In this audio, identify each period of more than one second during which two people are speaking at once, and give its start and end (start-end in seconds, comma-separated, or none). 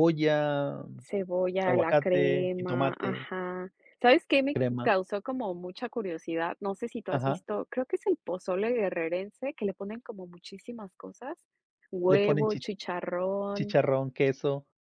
1.6-3.3